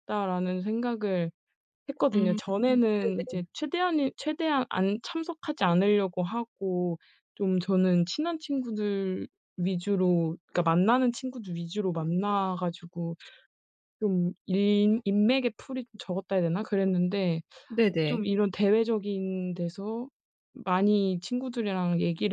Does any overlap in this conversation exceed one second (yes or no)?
yes